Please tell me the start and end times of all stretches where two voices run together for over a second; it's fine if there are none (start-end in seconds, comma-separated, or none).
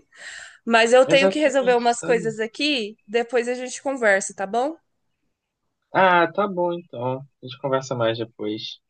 1.1-2.2